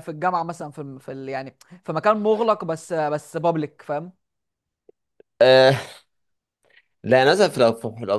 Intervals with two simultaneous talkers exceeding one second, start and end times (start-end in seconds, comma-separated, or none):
none